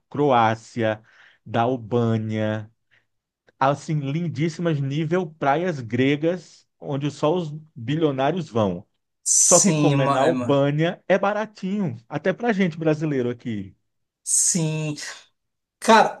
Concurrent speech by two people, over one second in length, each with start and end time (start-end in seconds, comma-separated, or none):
9.4-10.7